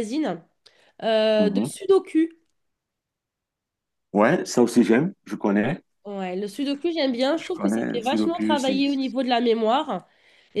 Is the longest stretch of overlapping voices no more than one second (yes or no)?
no